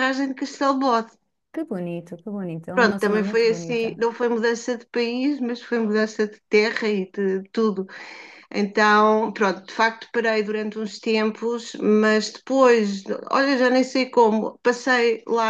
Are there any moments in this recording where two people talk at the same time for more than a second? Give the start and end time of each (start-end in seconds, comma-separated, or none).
2.7-4.0